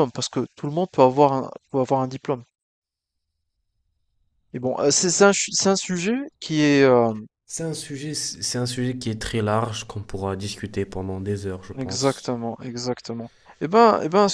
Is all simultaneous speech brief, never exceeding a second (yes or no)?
yes